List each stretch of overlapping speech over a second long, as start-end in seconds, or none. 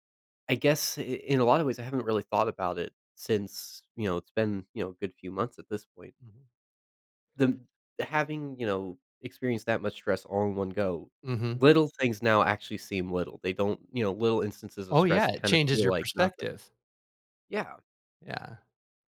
14.9-16.5